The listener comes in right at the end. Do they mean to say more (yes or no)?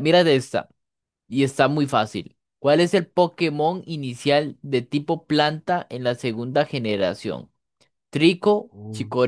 no